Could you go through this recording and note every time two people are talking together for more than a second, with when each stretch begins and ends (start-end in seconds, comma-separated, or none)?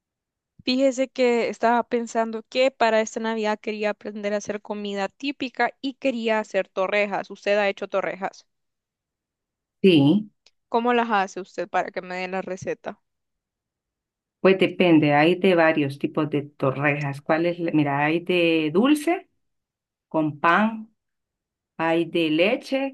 none